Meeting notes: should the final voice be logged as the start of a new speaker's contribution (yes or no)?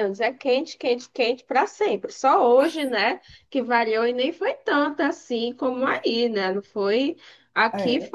no